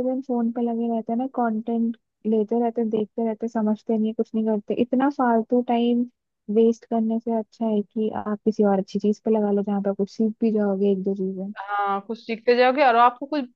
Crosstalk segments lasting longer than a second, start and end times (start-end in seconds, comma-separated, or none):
none